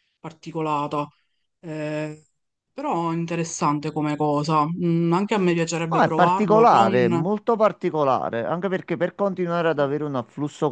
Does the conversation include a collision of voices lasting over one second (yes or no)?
yes